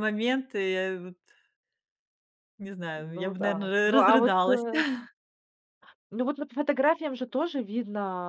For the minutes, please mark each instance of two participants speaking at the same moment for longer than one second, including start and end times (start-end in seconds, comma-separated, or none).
3.1-4.6